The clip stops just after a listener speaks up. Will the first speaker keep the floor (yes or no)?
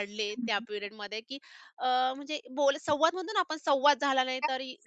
no